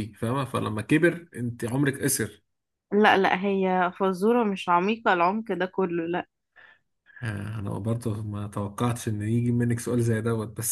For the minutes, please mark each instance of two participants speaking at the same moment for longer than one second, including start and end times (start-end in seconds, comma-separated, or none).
none